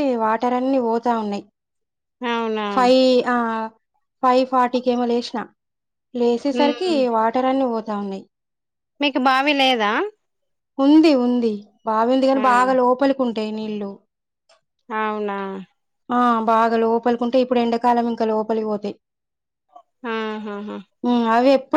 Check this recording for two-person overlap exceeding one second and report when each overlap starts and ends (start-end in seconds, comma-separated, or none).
none